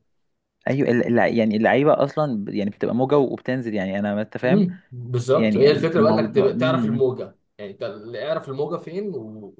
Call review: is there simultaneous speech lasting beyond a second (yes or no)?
yes